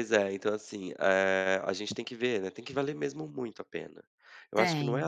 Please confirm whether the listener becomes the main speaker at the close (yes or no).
no